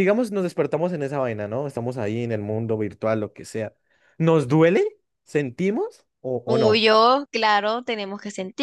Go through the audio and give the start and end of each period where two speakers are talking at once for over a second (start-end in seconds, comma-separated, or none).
none